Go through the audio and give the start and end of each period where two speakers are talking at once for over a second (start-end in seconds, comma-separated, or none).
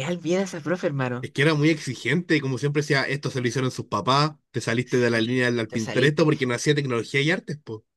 4.8-6.3